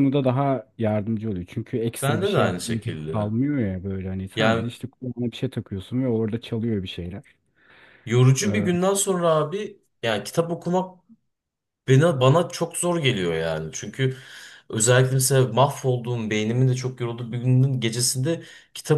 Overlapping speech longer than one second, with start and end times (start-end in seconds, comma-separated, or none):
2.0-3.3